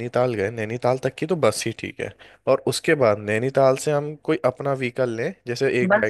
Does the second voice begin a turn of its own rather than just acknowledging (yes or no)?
yes